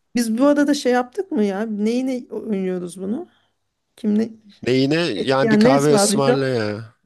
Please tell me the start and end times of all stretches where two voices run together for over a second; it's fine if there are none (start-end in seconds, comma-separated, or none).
5.2-6.4